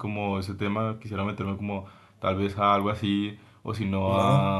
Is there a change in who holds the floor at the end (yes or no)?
no